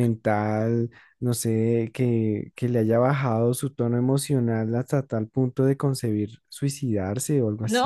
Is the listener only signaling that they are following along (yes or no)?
no